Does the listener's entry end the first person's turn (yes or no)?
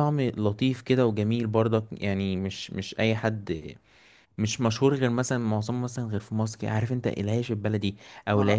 no